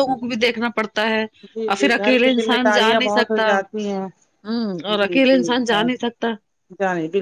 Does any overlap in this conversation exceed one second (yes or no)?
yes